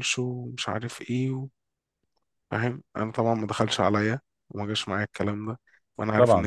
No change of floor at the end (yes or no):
yes